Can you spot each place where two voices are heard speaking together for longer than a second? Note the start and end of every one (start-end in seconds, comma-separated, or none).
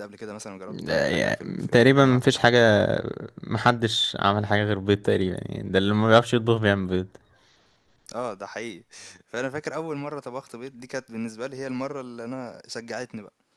0.7-2.2